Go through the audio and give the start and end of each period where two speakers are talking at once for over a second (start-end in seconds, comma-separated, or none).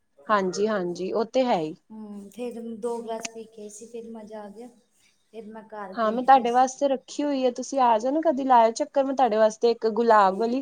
none